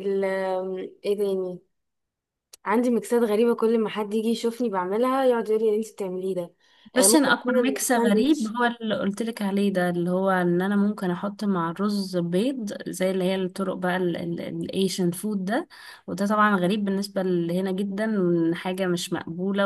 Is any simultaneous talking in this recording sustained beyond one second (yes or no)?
yes